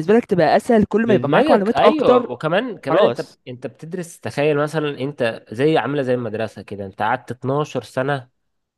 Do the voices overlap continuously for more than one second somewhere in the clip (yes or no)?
yes